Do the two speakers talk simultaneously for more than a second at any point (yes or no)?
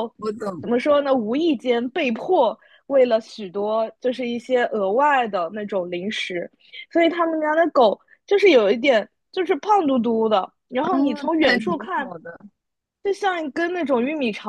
yes